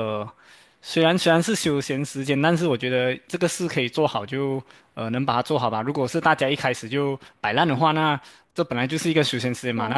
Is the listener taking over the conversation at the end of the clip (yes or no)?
no